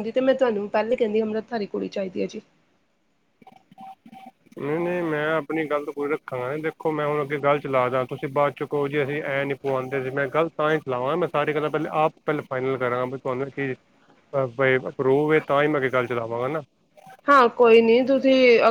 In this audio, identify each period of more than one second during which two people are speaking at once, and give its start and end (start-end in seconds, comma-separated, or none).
none